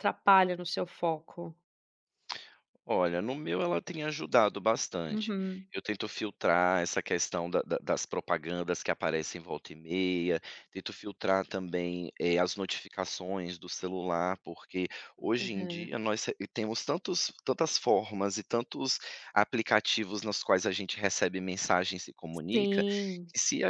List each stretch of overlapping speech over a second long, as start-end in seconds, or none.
none